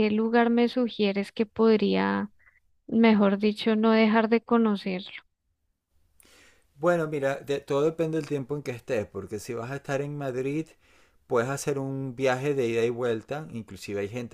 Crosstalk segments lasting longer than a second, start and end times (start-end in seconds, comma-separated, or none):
none